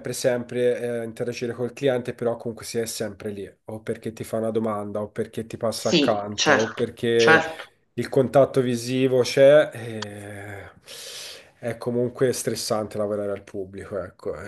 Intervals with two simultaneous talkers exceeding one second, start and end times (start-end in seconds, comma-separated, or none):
5.8-7.4